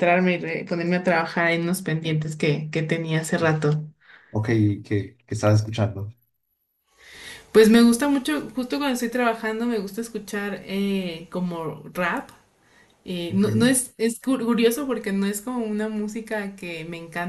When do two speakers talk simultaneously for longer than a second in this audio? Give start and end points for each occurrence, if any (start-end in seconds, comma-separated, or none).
none